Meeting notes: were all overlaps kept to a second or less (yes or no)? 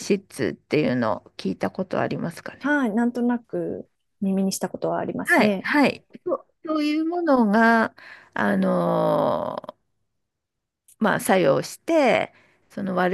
yes